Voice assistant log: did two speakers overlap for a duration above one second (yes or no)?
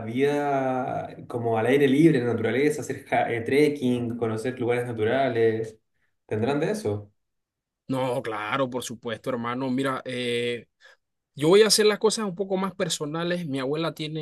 no